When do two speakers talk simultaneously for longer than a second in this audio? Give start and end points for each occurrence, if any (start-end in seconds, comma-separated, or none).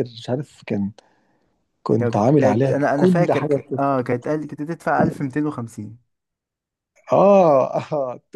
2.0-4.1